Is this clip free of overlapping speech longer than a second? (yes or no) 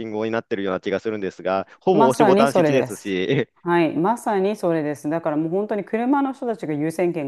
no